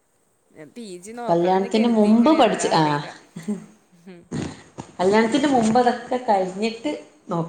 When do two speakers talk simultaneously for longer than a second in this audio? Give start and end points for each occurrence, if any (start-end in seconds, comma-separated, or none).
1.3-2.8